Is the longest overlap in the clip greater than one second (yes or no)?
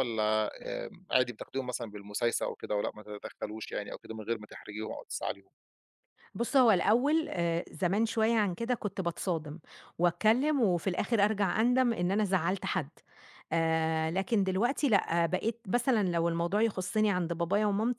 no